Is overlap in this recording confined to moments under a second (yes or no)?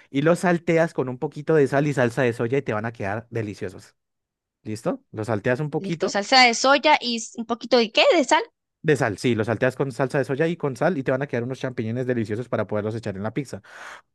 yes